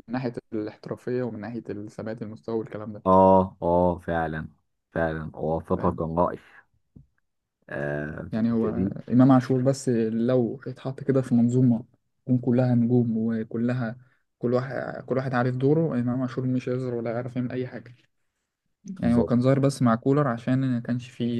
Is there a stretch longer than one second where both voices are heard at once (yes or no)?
no